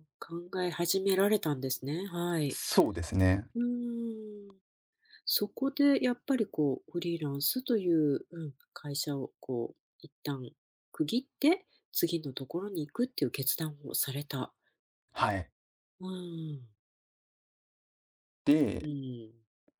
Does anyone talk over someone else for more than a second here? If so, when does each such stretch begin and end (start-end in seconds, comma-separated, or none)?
none